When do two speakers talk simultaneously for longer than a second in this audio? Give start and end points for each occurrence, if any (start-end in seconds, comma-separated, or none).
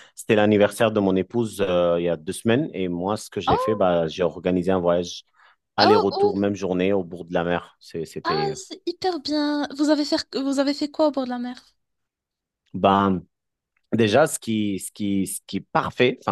none